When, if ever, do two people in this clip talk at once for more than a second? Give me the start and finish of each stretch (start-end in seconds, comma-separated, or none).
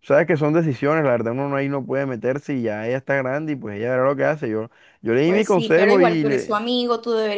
5.2-6.6